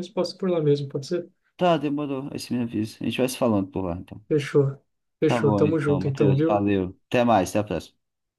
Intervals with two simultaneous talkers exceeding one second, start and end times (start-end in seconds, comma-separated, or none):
5.2-6.7